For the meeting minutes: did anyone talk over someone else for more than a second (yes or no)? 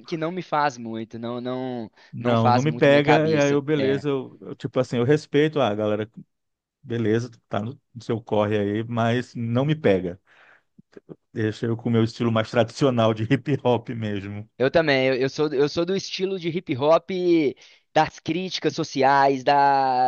yes